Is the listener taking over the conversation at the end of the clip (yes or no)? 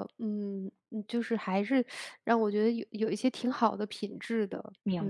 yes